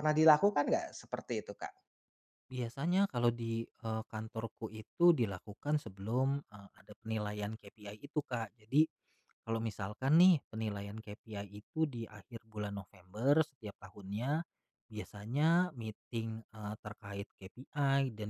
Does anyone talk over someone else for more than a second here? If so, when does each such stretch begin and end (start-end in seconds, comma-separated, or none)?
none